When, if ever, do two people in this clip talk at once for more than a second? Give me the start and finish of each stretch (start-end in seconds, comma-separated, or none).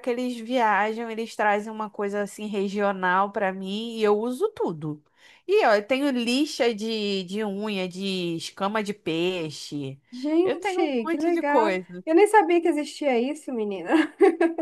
10.4-12.0